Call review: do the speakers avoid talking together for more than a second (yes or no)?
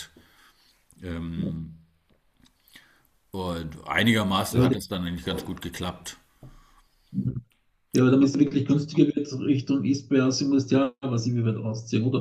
yes